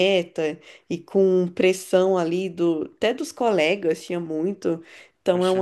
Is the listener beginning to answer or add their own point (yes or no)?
no